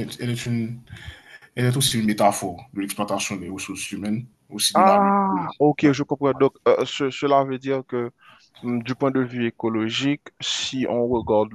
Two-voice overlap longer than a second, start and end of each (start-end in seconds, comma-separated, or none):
none